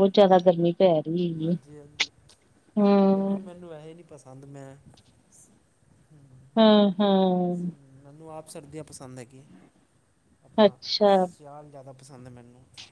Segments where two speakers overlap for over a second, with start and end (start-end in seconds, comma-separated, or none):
none